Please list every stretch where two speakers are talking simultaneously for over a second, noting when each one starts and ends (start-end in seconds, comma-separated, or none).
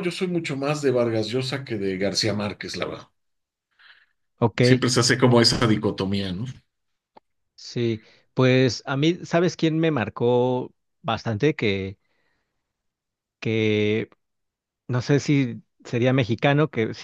none